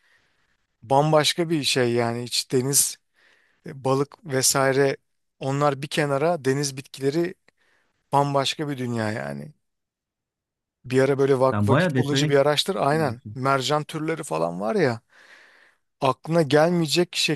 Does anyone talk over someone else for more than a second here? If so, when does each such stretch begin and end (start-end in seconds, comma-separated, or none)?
11.5-13.4